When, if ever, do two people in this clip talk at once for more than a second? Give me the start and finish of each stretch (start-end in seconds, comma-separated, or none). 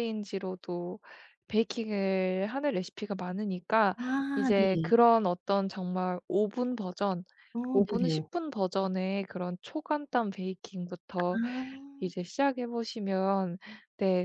none